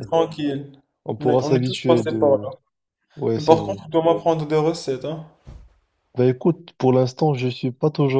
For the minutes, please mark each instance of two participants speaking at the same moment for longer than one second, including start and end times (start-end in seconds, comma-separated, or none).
1.2-2.5